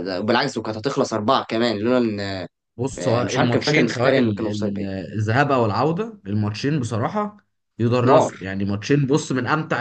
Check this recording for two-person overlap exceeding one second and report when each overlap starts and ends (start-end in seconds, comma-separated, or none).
3.0-4.8